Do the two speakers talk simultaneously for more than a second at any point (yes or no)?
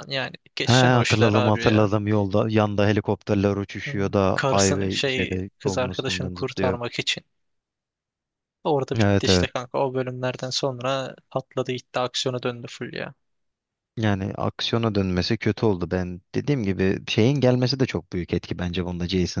yes